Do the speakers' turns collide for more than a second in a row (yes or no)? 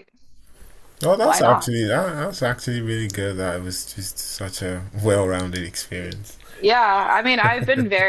no